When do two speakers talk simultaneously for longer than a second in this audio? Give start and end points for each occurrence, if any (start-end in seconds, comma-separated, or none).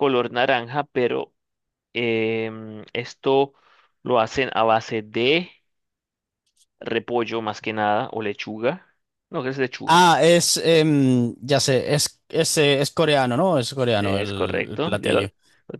14.0-15.2